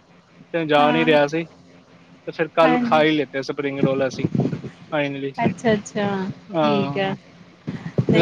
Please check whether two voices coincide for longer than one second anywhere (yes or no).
no